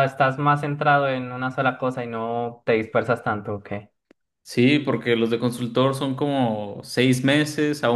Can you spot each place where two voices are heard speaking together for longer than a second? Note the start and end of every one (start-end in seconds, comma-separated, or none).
none